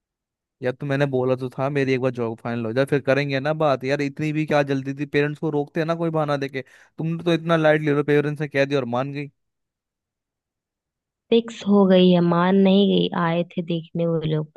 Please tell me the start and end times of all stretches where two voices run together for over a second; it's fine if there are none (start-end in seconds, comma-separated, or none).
none